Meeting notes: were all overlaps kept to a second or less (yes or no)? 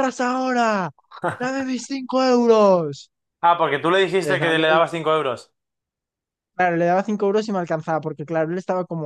yes